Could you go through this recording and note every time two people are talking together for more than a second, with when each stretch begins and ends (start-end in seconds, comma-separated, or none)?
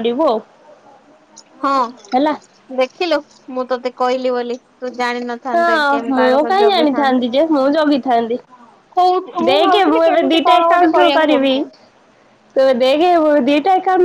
9.5-11.5